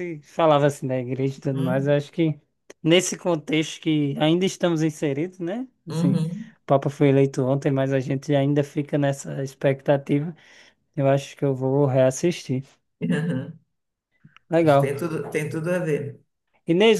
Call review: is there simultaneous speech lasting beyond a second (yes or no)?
no